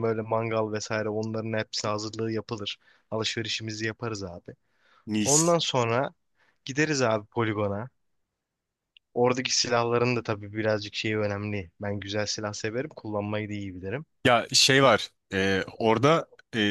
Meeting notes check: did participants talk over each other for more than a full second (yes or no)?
no